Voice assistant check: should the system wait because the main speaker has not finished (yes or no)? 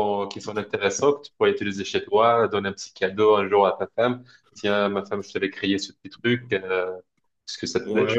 no